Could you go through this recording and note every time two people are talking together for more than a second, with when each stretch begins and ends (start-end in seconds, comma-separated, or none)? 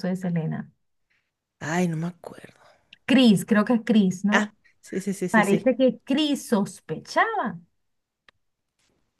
none